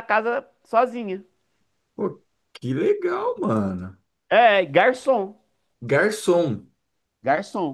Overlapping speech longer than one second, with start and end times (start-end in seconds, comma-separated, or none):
none